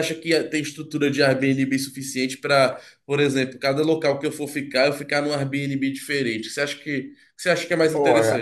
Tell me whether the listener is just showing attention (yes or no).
no